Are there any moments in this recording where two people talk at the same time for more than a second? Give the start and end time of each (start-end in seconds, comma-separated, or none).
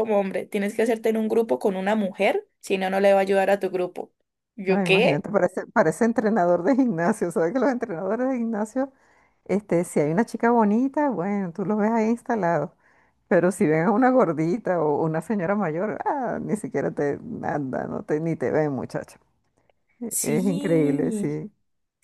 20.1-21.4